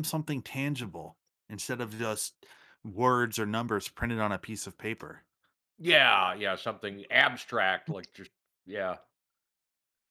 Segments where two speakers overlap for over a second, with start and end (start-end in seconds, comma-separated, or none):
none